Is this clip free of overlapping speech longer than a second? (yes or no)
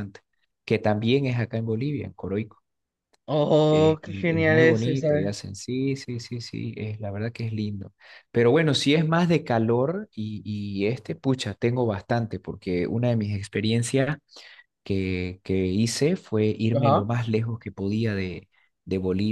no